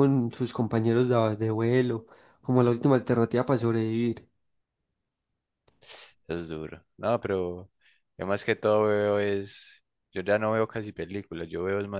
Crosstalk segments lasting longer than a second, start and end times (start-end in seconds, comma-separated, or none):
none